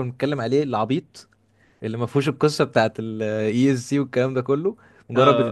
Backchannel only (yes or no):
no